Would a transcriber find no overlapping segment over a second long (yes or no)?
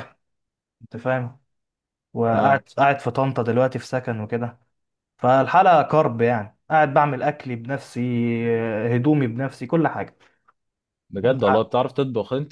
yes